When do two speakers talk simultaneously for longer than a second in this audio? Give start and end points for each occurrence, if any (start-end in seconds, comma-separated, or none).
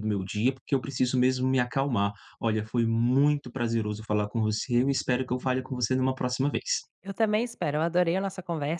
none